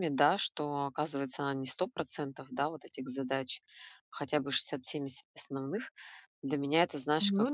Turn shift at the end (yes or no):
no